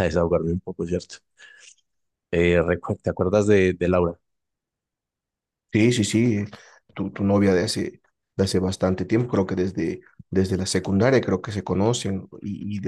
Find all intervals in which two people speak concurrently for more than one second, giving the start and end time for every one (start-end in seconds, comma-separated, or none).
none